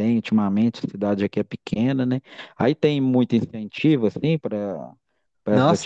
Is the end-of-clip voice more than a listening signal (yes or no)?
yes